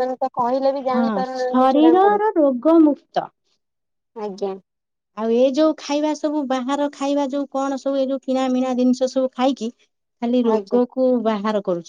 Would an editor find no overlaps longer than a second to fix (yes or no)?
no